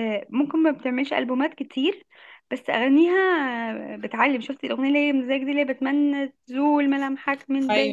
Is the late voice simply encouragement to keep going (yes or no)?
no